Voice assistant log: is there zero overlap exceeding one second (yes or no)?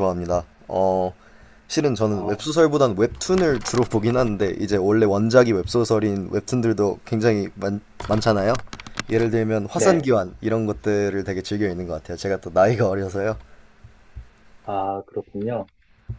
yes